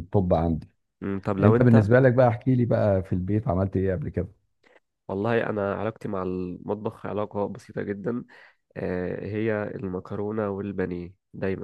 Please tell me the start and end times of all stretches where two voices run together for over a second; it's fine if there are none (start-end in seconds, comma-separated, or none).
none